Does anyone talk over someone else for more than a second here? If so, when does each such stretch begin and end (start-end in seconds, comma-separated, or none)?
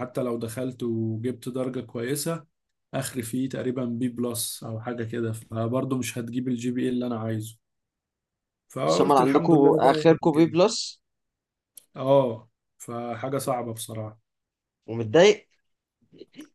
8.9-10.5